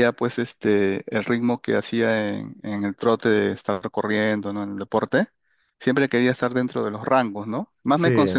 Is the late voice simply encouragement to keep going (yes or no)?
yes